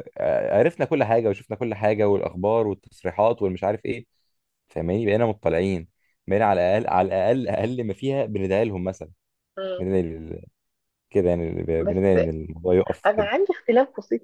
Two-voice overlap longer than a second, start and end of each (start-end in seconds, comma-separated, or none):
none